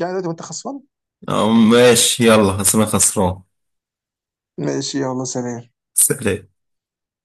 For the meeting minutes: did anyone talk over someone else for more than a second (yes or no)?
no